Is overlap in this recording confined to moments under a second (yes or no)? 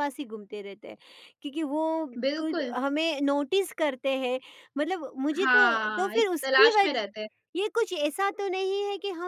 no